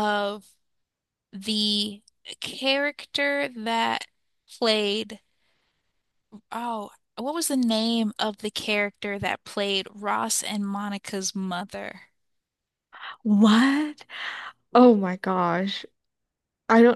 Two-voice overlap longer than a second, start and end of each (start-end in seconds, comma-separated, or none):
none